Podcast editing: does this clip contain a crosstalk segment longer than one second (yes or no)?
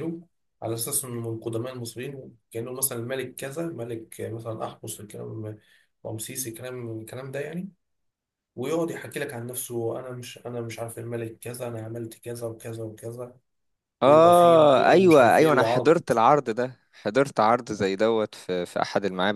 yes